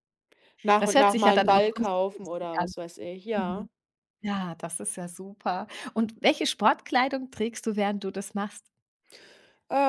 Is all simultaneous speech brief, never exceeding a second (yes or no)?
no